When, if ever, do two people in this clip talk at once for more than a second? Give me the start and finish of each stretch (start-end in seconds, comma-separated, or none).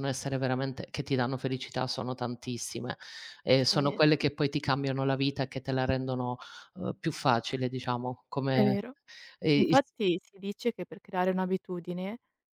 none